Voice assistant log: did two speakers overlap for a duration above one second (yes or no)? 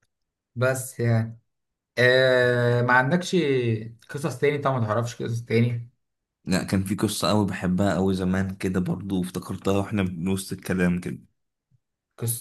no